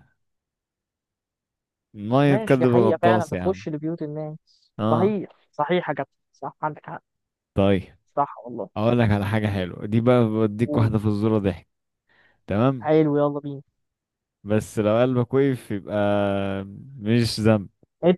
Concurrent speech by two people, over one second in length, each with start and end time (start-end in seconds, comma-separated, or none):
2.3-3.6